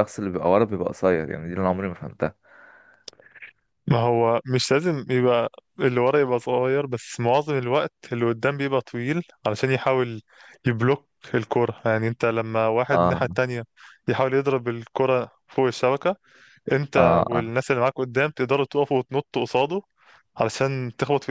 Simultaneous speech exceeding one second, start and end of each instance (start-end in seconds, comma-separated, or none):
none